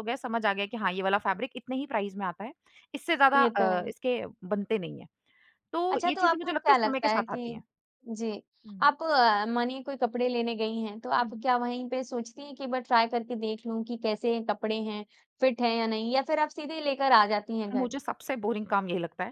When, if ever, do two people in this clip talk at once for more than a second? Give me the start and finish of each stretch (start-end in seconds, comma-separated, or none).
5.9-7.6